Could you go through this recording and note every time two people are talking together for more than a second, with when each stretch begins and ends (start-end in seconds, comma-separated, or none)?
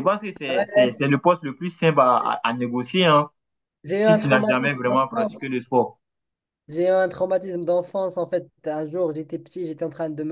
4.0-5.4